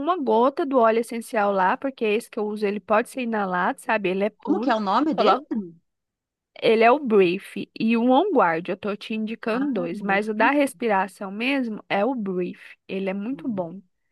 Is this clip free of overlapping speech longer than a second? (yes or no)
no